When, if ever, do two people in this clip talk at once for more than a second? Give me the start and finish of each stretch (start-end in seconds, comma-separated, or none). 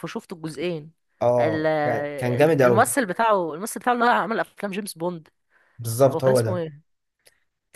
1.4-2.9